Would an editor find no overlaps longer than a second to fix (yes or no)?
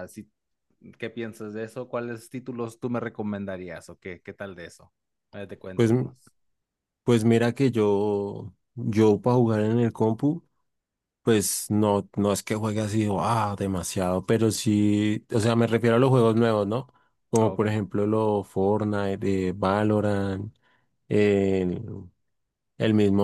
yes